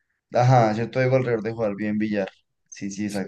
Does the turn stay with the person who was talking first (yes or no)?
no